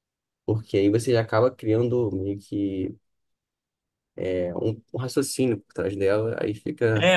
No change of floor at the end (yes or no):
no